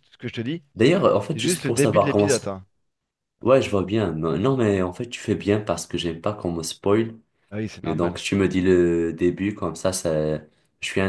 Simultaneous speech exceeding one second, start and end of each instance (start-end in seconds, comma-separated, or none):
1.0-2.5